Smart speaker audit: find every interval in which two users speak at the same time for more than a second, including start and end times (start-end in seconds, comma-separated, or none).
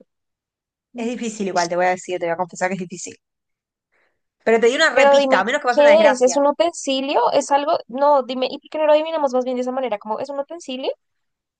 4.9-6.4